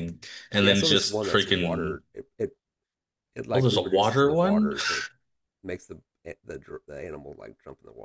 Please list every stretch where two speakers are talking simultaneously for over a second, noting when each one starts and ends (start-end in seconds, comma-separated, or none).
0.6-2.0, 3.5-4.7